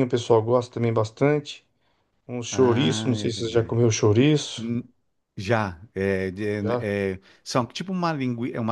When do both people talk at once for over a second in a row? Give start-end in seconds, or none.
2.5-3.8